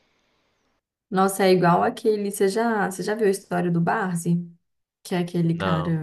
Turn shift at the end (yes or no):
no